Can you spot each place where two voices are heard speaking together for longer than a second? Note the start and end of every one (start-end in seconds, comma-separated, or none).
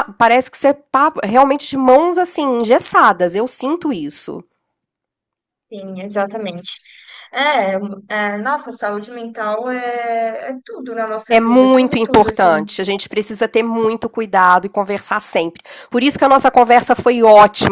11.3-12.5